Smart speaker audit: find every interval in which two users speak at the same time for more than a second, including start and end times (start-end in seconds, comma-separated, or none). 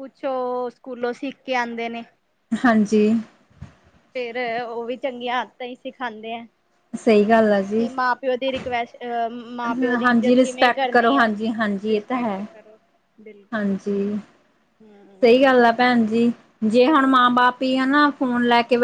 10.0-11.2